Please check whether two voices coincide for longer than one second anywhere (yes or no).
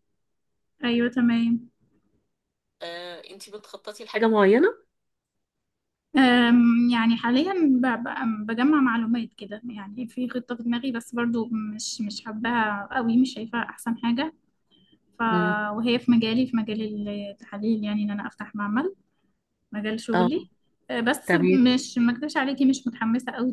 no